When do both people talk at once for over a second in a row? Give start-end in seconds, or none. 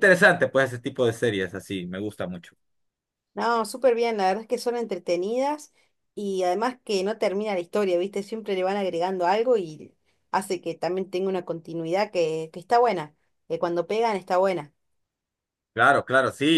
none